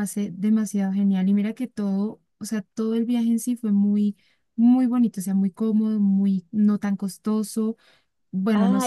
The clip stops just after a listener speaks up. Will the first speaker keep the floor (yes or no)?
no